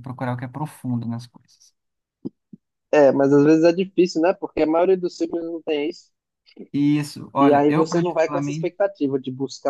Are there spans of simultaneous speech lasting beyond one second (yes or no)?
yes